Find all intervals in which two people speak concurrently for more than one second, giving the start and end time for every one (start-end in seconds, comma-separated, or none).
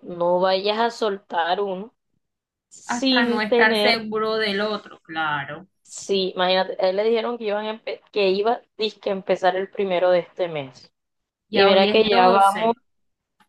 2.9-4.1, 11.5-12.7